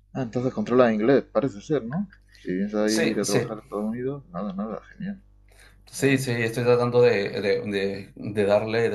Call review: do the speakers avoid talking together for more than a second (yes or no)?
yes